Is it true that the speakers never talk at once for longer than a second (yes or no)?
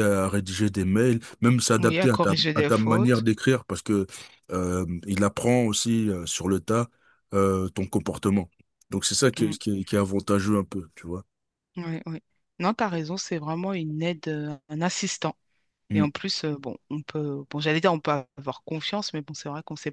no